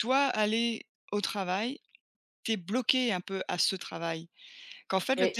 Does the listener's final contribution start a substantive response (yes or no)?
no